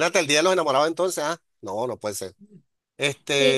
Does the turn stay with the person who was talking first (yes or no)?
no